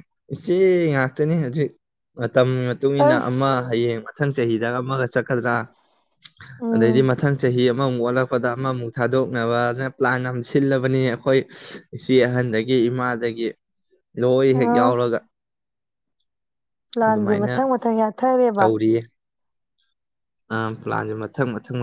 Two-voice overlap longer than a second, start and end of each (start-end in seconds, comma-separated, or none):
none